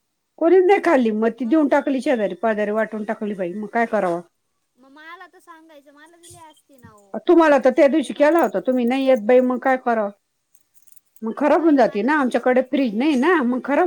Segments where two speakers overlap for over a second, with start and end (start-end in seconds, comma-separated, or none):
7.3-8.8, 11.6-13.1